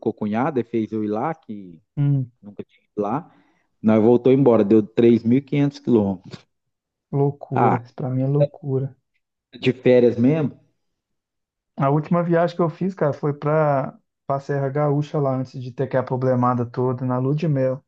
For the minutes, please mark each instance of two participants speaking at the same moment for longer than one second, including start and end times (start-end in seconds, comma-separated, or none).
none